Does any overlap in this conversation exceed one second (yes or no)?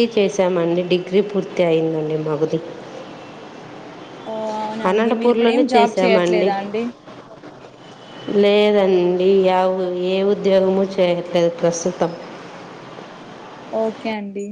yes